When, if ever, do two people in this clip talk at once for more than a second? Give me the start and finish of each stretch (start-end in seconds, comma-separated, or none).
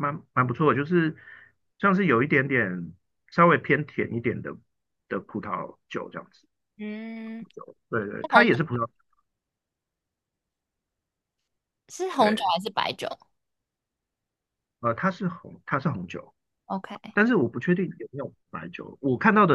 none